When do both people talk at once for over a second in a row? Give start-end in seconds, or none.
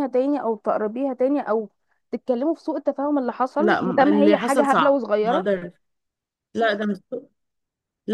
3.6-5.5